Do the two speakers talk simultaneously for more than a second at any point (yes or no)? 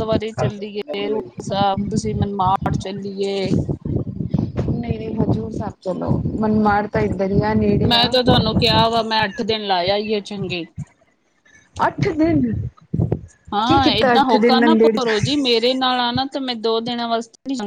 yes